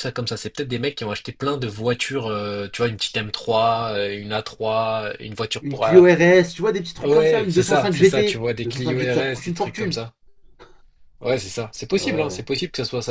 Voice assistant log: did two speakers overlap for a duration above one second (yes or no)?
yes